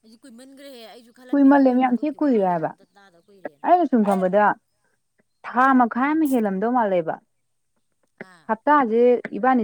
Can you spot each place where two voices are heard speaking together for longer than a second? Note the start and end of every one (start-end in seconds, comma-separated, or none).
1.3-2.7